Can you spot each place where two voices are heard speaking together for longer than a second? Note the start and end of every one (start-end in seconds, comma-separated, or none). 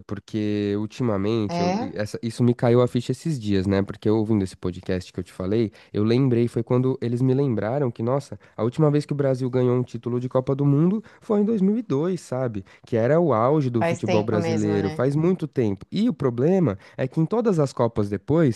13.8-15.1